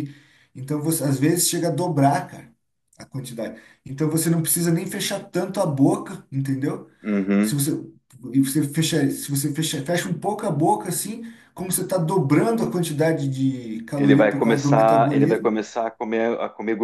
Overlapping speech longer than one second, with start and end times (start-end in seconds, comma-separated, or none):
14.0-15.5